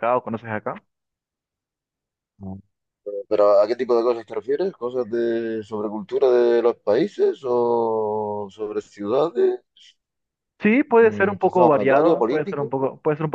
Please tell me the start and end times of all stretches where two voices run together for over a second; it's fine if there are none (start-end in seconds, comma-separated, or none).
11.0-12.8